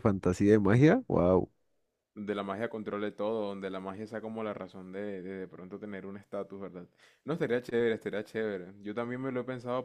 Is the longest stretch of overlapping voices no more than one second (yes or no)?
yes